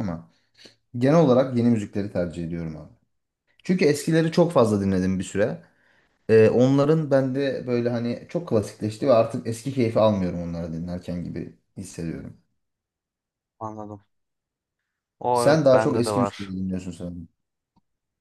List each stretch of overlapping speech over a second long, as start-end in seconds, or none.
15.3-16.5